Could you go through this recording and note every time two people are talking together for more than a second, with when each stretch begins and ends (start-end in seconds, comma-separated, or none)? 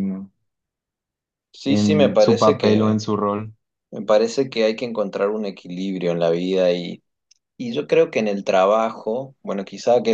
1.7-3.0